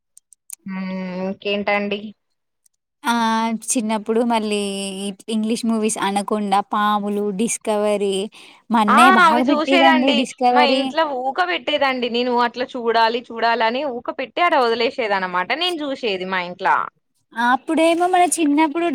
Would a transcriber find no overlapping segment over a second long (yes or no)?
yes